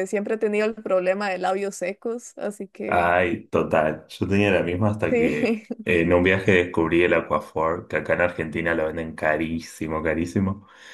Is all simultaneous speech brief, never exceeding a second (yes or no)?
yes